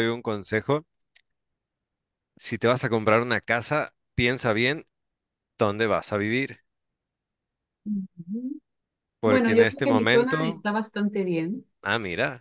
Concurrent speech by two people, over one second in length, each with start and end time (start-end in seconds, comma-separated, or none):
9.2-10.7